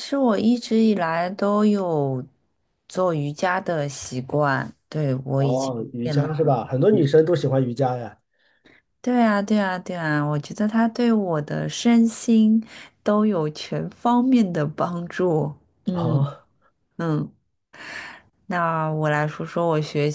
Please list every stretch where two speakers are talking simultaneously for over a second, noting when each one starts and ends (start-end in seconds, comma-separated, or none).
5.4-7.1